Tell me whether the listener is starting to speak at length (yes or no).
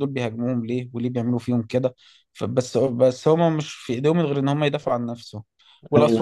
no